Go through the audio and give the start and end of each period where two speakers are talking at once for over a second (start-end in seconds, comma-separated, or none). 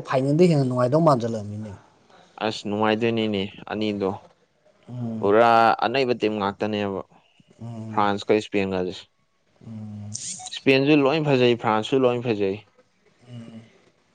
none